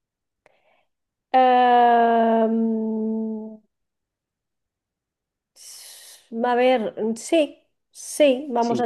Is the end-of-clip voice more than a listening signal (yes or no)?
yes